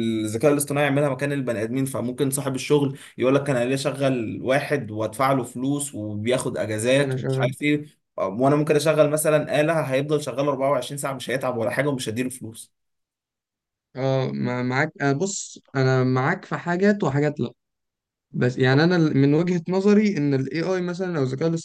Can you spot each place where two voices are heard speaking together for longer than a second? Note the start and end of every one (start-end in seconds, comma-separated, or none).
none